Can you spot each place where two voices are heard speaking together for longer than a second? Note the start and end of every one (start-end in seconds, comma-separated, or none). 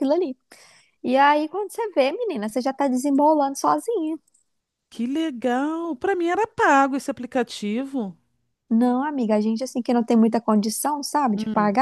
none